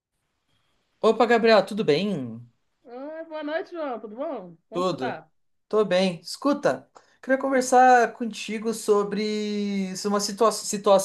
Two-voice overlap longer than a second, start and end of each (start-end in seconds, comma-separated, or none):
none